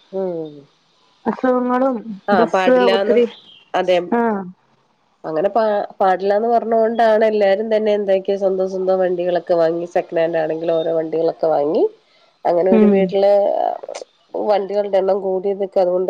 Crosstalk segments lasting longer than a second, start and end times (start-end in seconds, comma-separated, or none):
none